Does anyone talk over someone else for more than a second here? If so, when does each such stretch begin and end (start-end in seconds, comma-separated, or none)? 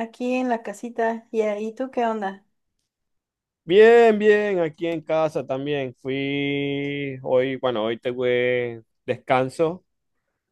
none